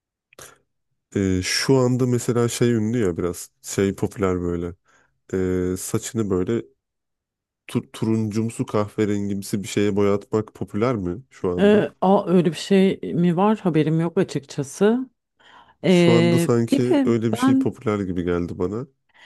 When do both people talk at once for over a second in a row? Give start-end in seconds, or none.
15.9-17.8